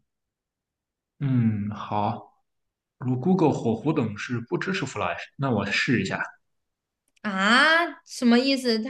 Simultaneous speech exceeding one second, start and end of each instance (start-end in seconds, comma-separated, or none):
none